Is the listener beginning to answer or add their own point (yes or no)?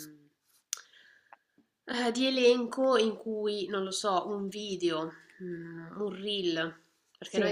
no